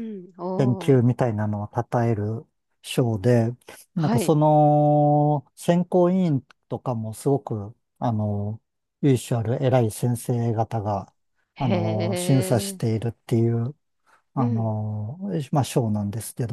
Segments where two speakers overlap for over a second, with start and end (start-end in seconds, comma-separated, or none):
11.6-12.8